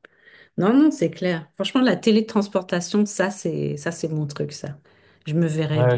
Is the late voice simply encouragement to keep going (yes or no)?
no